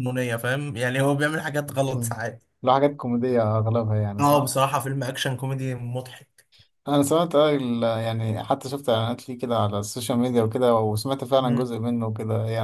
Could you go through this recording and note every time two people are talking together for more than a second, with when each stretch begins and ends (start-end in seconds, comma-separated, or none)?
none